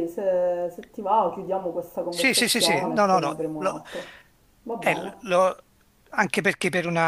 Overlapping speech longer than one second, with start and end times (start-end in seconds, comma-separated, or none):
2.1-3.8